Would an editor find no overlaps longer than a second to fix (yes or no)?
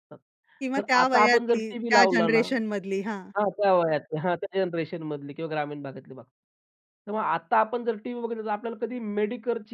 no